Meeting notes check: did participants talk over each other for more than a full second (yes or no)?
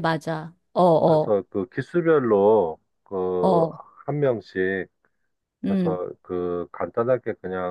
no